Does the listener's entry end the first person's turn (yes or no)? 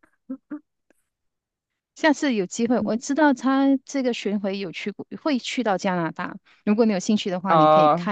yes